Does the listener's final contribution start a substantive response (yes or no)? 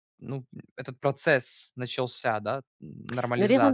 yes